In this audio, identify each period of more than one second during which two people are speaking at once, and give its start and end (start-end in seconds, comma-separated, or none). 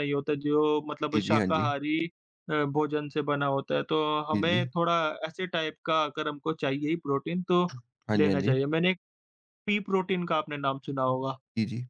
none